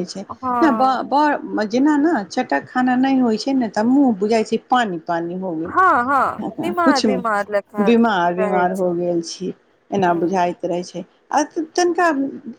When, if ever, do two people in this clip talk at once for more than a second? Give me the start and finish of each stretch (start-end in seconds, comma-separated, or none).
none